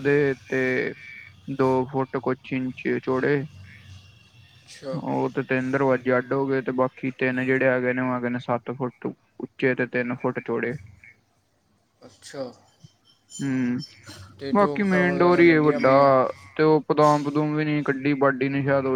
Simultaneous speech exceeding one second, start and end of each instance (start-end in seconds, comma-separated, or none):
14.5-15.9